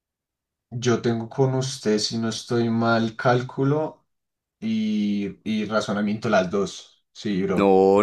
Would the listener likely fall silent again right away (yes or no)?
no